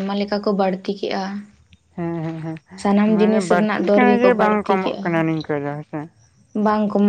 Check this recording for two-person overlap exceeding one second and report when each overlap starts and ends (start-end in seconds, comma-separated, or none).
3.2-5.1